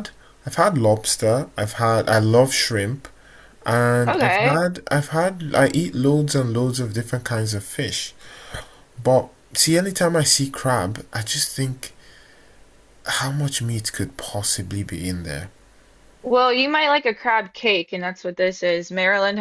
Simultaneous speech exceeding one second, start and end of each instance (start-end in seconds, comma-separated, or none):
none